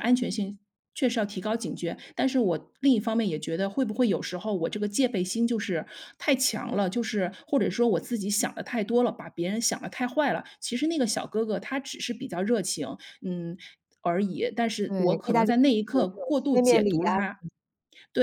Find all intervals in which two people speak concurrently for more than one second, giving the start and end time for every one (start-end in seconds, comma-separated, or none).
14.9-17.1